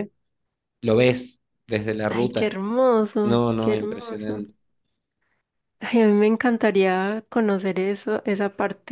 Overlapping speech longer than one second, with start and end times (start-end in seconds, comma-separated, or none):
3.2-4.4